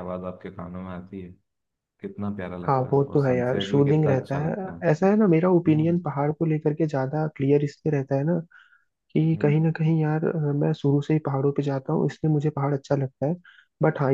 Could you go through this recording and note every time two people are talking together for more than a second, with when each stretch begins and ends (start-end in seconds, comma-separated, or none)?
2.6-4.5